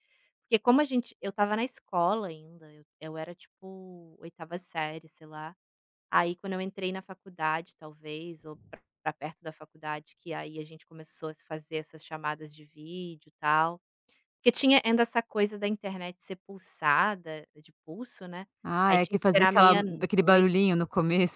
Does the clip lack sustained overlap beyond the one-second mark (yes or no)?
no